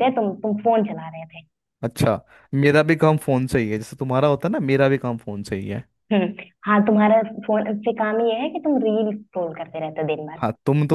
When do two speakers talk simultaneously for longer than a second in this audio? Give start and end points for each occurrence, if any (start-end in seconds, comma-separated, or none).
none